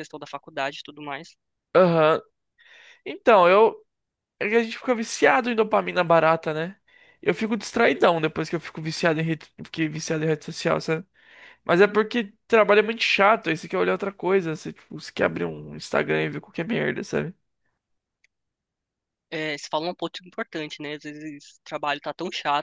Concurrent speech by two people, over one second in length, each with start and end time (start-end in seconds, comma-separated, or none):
none